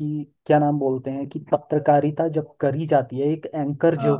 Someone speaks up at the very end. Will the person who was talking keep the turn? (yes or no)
yes